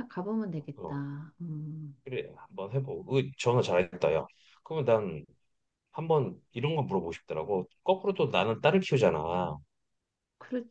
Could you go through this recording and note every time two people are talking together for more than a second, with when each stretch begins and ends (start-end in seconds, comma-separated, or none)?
none